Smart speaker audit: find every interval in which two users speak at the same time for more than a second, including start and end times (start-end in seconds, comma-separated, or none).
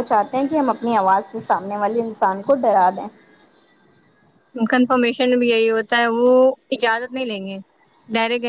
none